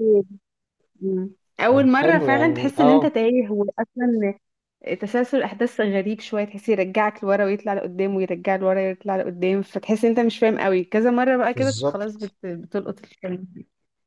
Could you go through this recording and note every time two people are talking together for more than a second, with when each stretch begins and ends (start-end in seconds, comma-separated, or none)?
1.7-3.1